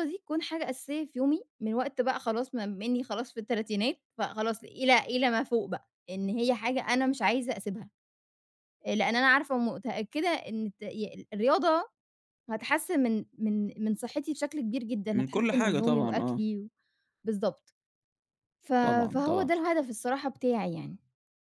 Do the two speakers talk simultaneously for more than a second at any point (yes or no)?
yes